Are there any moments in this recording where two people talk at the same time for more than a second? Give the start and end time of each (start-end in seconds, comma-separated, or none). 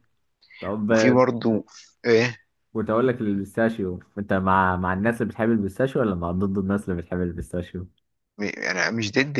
none